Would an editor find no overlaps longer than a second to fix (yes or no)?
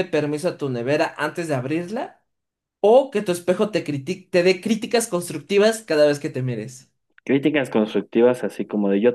yes